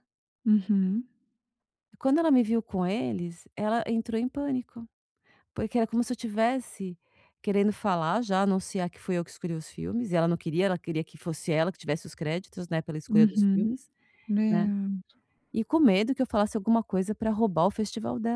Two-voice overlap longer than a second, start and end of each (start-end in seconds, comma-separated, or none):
none